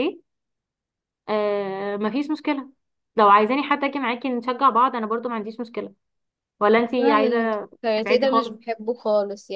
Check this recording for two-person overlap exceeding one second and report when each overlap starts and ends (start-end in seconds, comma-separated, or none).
7.0-8.6